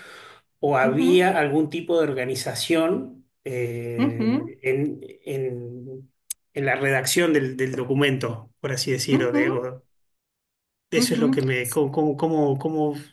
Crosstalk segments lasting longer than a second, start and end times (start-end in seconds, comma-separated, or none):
none